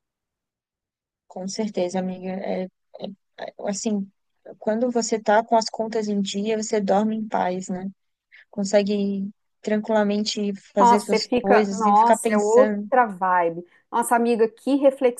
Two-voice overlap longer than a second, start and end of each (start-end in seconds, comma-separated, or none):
10.8-12.9